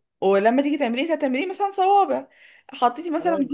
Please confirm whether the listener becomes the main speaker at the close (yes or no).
no